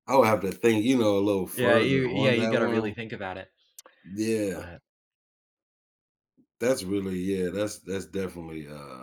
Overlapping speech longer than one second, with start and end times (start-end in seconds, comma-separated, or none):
1.5-2.9